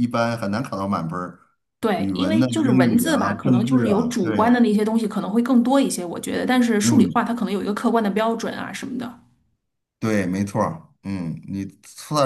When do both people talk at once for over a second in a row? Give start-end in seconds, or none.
2.0-4.6